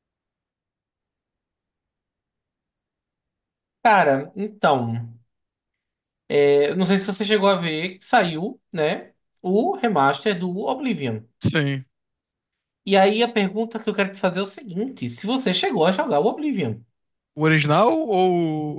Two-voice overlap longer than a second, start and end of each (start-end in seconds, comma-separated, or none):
none